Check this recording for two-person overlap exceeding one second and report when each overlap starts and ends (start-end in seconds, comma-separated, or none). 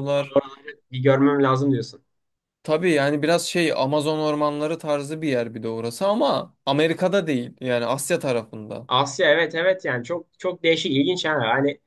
none